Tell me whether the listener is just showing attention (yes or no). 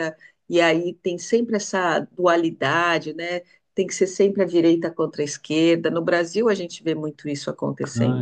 no